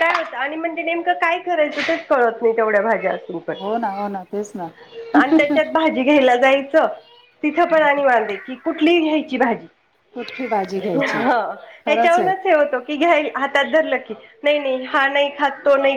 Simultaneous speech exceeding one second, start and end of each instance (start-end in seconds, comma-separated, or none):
none